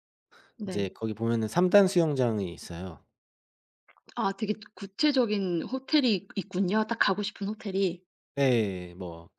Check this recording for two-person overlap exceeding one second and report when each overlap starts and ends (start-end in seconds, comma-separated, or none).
none